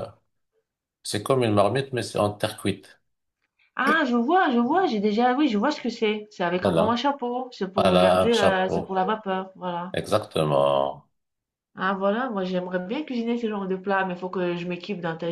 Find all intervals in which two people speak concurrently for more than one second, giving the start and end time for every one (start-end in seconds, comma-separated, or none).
7.8-9.0